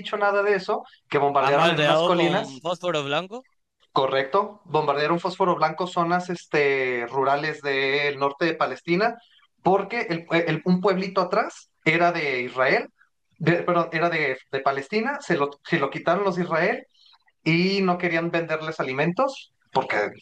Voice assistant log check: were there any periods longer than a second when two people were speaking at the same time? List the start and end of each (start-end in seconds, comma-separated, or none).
1.4-2.6